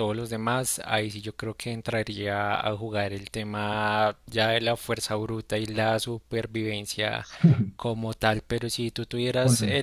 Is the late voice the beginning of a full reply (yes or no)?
no